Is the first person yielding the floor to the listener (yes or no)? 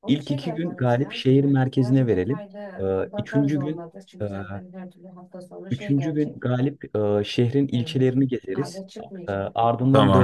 no